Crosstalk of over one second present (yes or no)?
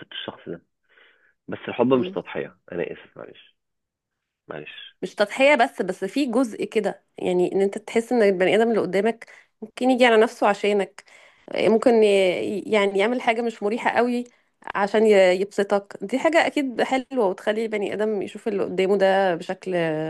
no